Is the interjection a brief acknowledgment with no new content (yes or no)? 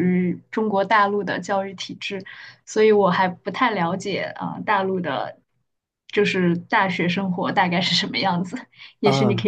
no